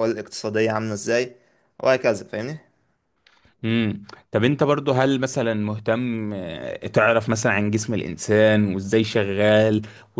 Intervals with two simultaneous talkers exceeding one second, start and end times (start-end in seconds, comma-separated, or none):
none